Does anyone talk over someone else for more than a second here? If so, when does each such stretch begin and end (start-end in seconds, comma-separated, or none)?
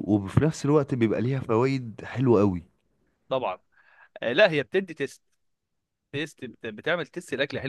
none